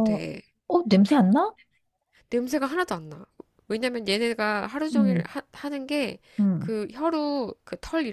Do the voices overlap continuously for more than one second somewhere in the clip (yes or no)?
no